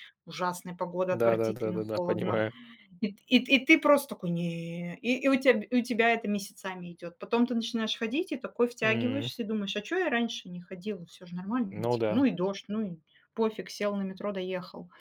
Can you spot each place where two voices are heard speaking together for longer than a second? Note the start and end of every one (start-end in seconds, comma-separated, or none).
1.1-2.4